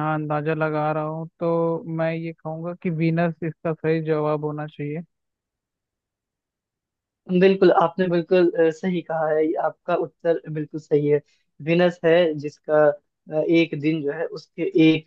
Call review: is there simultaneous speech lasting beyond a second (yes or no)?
no